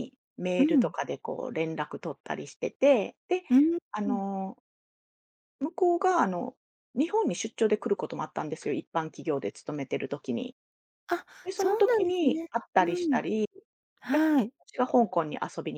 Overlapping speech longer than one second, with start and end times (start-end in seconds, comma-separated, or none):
11.4-13.2